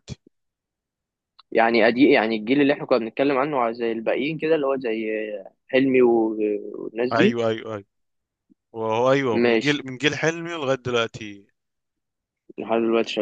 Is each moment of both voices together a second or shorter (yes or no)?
yes